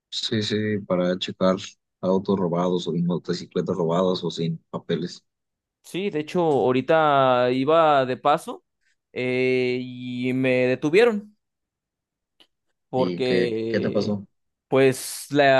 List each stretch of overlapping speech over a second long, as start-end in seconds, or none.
12.9-14.2